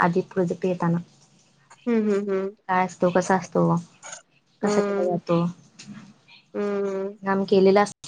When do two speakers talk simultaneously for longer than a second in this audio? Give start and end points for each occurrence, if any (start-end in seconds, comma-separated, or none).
none